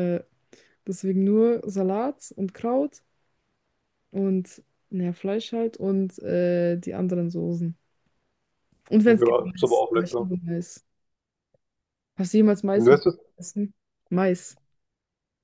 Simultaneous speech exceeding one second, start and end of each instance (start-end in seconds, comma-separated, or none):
9.1-10.3